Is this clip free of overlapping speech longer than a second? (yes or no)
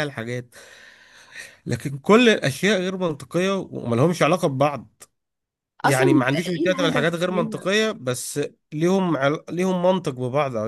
no